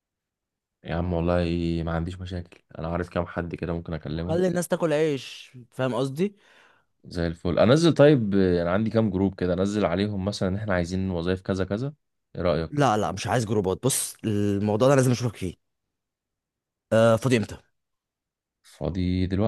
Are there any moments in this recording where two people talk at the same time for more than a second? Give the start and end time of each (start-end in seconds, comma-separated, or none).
none